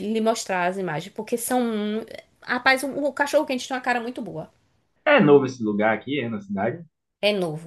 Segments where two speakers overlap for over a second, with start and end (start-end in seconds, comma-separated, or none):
none